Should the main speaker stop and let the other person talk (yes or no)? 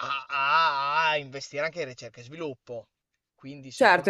yes